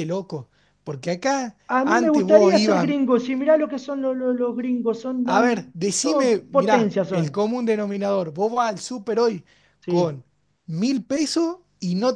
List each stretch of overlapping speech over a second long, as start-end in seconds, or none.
1.7-2.9, 5.2-7.4